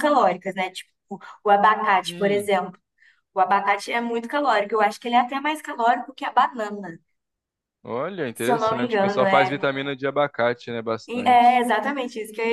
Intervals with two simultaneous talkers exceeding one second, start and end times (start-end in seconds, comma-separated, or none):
8.3-9.7